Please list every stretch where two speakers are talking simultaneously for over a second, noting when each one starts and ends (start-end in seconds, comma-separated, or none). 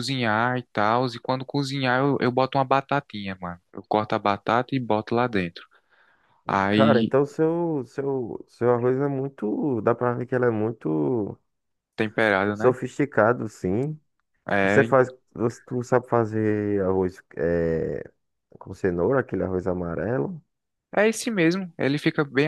none